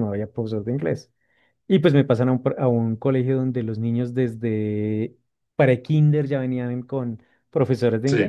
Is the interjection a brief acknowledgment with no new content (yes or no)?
yes